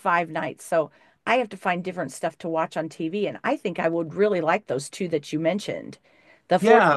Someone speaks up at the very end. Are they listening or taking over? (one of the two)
listening